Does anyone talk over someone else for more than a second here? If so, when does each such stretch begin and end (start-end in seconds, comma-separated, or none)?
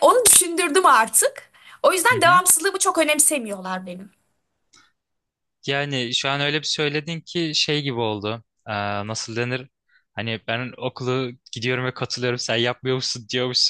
none